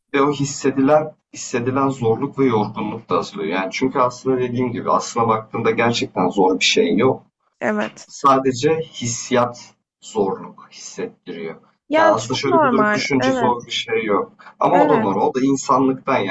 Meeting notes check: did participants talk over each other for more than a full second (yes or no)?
yes